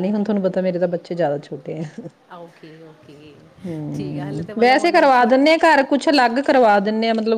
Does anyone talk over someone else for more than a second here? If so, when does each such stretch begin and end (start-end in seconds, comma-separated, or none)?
4.0-5.5